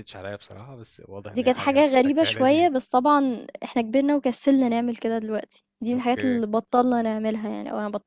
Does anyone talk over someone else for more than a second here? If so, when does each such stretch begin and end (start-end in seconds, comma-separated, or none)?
1.3-2.8